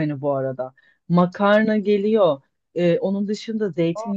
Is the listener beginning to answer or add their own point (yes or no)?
no